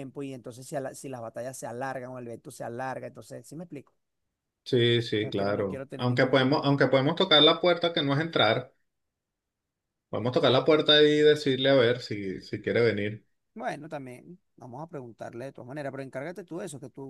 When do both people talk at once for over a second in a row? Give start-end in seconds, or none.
5.2-6.8